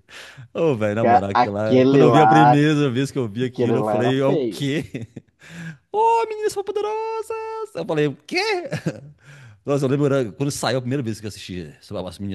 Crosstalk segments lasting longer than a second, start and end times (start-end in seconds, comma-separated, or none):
1.0-2.6, 3.4-4.7